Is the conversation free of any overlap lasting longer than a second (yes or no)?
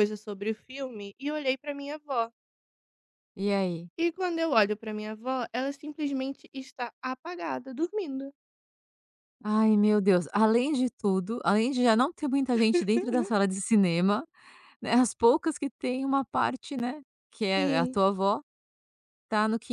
yes